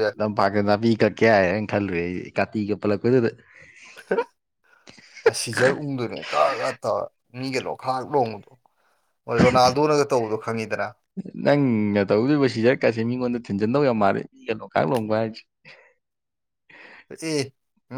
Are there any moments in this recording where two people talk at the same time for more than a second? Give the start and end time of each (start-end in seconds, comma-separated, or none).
none